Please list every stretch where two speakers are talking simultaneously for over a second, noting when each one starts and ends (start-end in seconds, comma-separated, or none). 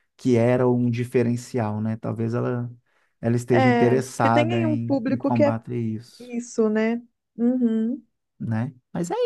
3.5-5.5